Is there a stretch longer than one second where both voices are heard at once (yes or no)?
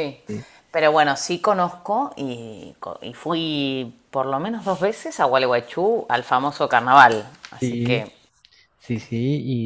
no